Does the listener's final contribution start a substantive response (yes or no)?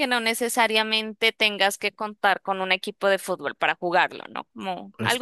yes